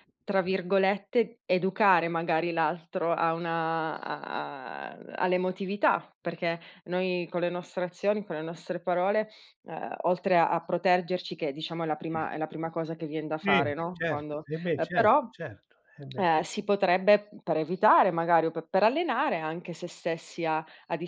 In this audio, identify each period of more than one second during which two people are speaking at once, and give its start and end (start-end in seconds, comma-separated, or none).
13.3-15.2